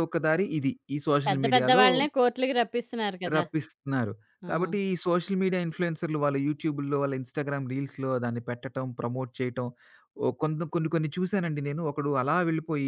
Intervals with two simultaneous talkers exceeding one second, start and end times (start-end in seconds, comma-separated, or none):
none